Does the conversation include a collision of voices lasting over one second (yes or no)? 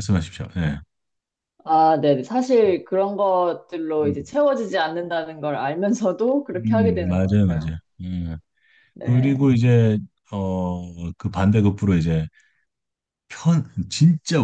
yes